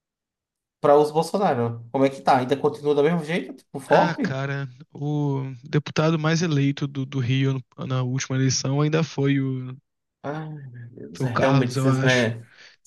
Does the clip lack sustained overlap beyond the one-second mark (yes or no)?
no